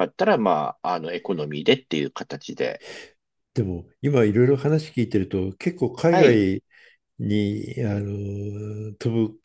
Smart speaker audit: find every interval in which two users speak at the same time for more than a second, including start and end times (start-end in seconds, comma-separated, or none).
none